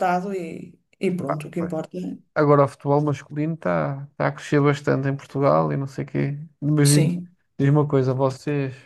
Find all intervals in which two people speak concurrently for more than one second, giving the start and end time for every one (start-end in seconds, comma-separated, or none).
none